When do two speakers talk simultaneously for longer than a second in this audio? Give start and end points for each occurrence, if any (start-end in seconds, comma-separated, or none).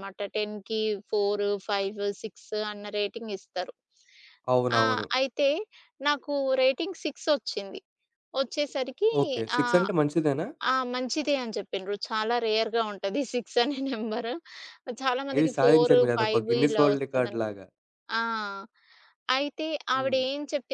15.4-17.4